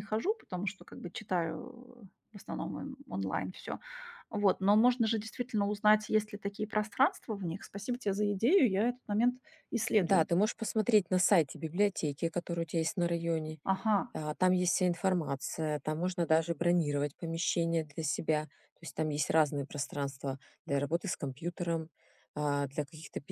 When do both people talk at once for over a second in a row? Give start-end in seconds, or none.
none